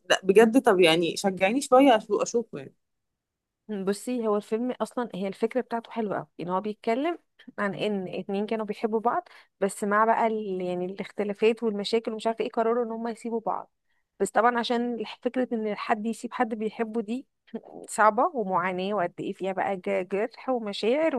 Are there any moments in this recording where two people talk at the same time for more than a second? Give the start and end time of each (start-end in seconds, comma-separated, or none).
none